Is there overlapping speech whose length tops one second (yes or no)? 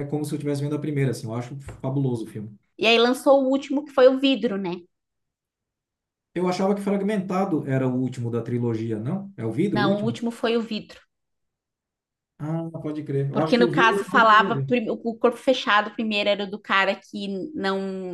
yes